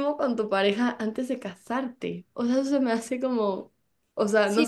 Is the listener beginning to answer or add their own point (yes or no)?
yes